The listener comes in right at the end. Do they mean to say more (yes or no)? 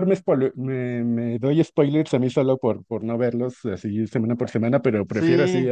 yes